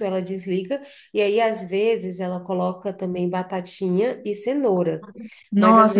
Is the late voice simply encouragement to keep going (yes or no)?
no